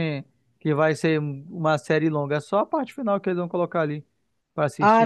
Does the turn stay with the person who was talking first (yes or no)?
no